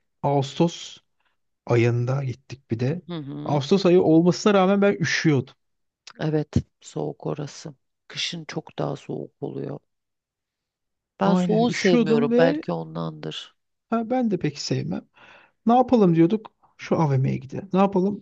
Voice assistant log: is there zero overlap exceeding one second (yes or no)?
no